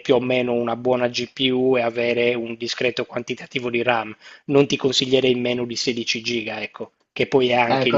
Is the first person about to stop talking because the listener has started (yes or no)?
yes